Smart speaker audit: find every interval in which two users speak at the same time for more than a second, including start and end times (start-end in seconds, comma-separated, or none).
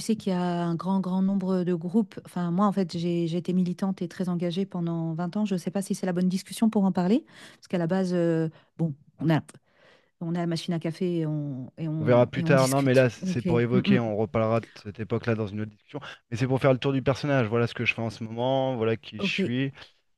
12.0-14.0